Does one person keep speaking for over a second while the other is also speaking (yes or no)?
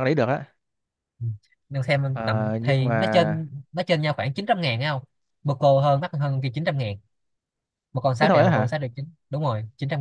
yes